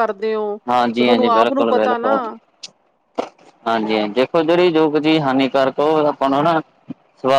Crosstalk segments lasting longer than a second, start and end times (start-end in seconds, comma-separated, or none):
0.9-2.1